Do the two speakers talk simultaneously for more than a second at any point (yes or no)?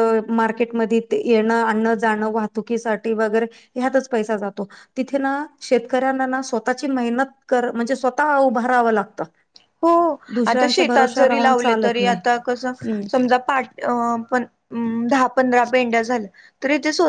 yes